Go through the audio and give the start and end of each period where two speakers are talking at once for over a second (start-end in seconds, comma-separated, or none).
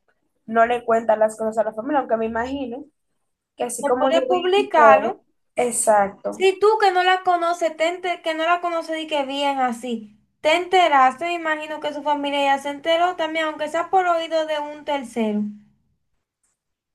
3.8-5.2